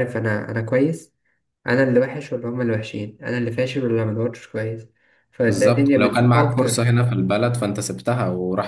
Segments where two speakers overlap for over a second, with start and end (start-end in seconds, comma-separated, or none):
5.4-6.9